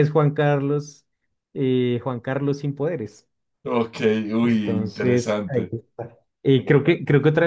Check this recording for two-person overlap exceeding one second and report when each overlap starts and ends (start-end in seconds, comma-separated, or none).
4.4-5.8